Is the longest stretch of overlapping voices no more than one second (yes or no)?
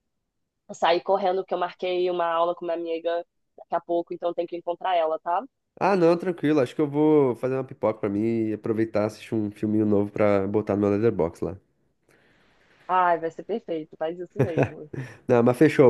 yes